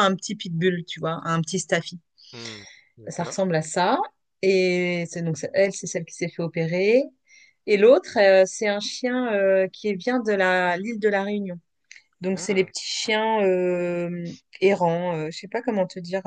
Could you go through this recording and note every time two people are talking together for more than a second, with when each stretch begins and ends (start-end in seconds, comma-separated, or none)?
none